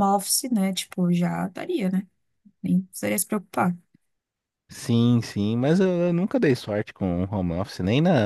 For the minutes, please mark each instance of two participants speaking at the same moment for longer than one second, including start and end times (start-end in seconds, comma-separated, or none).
none